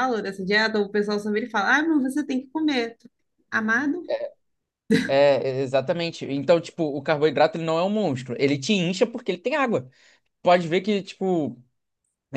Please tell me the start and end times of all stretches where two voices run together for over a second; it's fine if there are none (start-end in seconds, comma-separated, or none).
none